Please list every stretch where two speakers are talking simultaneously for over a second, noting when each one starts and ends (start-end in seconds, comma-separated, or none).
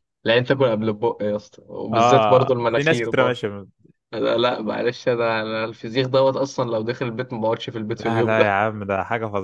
1.9-3.4